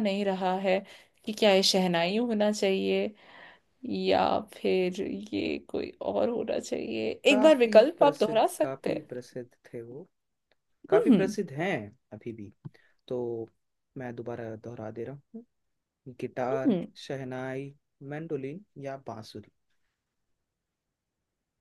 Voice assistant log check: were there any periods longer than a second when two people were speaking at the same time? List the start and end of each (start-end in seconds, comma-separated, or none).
7.3-9.1